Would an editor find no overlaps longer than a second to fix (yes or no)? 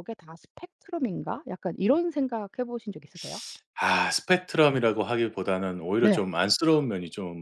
yes